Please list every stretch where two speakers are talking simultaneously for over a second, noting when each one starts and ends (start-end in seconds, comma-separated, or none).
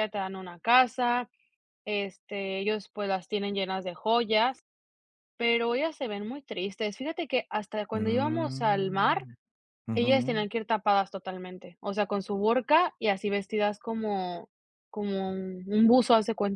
7.9-9.3